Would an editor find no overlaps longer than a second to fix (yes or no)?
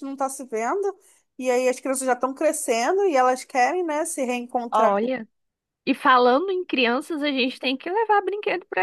yes